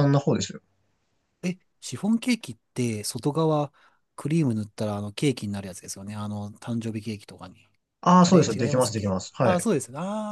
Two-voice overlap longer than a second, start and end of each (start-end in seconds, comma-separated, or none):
8.2-9.7